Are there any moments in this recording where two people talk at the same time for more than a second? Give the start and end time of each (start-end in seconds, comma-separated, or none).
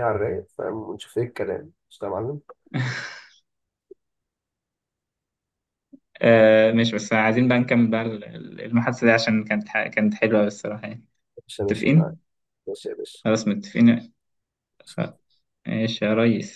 none